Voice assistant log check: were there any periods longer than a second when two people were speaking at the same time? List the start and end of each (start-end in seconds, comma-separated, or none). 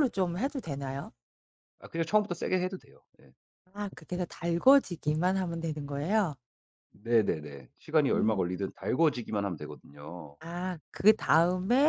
none